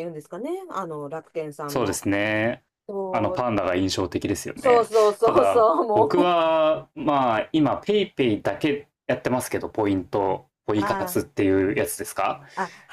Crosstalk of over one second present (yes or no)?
yes